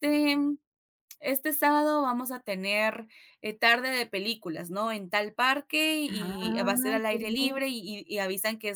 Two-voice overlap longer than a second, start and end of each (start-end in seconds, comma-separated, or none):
6.0-7.6